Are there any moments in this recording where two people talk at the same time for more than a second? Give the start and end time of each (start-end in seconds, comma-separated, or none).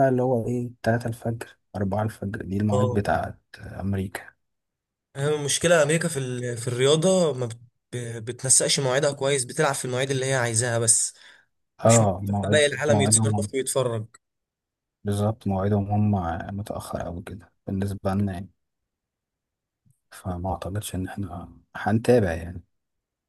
11.8-13.5